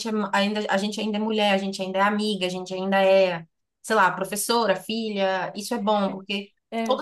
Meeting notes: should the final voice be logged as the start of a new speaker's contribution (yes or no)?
no